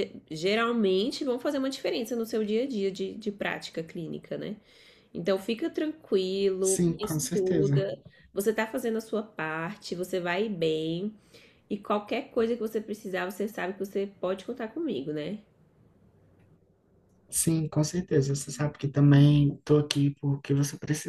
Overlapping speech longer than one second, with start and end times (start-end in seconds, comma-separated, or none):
6.6-7.8